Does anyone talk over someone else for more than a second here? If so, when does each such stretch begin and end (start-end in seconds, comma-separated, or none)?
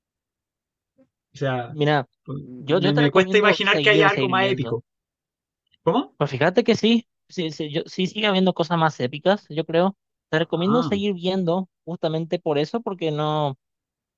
2.8-4.8